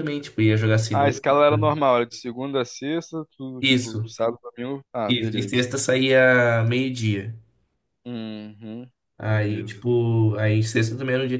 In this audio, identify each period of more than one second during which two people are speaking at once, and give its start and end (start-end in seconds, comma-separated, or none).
none